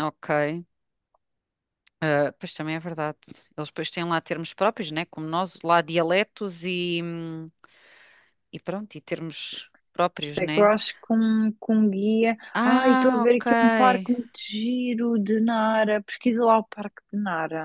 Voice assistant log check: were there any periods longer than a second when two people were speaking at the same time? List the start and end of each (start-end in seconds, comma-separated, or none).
12.5-14.1